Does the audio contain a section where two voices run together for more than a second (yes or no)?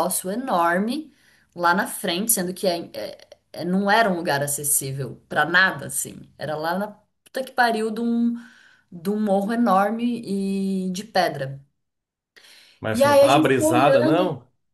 yes